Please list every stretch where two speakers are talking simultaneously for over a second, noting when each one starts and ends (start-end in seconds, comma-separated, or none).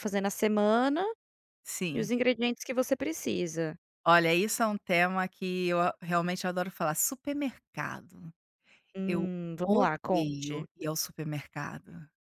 9.1-10.7